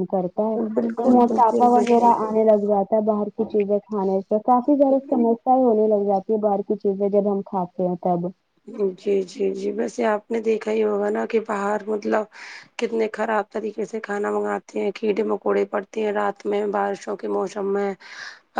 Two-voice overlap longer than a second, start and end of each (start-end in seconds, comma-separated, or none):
0.7-2.3